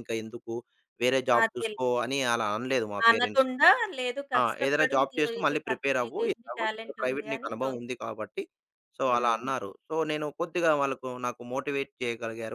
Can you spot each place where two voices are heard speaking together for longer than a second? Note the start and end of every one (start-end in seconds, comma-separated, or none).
4.4-7.8